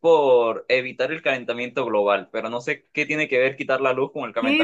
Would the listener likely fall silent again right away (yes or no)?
no